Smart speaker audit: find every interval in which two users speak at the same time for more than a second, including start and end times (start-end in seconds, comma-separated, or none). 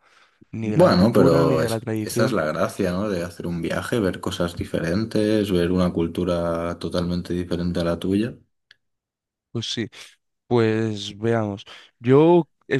0.6-2.4